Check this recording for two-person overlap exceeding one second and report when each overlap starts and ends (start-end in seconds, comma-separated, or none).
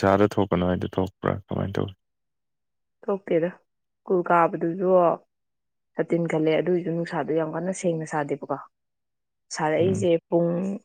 none